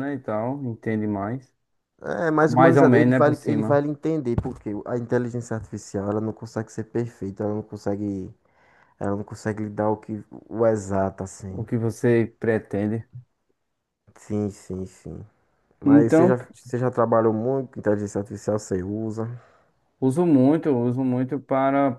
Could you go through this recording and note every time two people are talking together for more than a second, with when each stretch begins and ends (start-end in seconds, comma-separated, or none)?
2.5-3.8